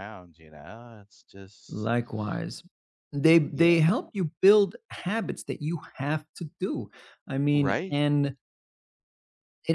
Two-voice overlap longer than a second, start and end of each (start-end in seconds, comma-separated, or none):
none